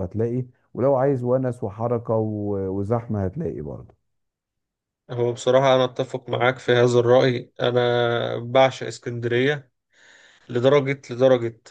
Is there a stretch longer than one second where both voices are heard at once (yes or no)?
no